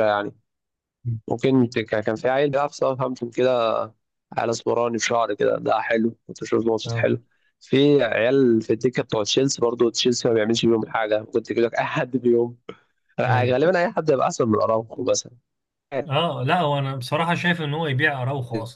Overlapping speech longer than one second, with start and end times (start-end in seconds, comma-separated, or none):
none